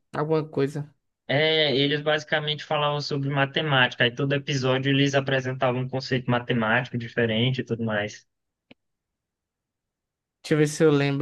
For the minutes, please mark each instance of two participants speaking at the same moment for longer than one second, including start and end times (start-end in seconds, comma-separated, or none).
none